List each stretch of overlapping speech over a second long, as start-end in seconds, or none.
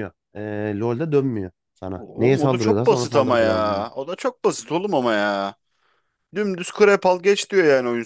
2.0-3.9